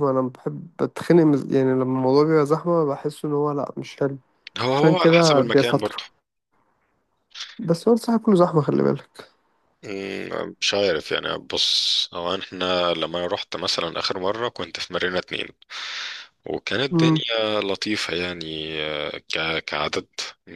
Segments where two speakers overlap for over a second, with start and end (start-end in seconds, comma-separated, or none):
4.7-6.0